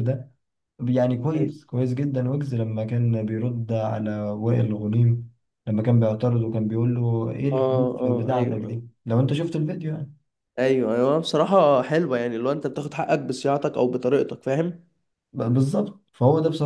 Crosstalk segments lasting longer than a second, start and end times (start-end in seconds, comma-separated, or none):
7.5-8.8